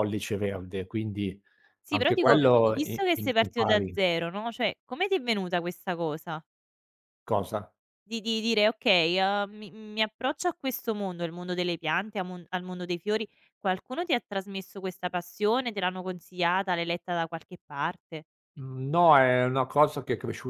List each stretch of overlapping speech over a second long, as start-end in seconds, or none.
1.9-4.0